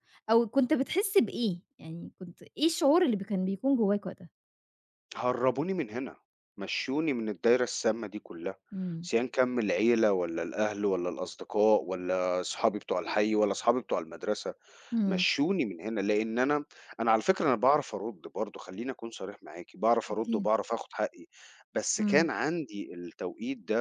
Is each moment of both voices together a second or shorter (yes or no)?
yes